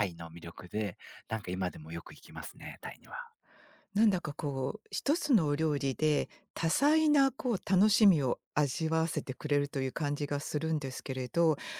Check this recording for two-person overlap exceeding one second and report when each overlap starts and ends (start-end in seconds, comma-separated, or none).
none